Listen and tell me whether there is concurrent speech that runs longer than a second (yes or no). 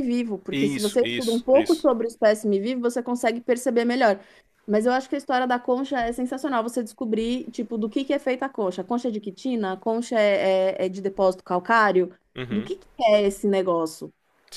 yes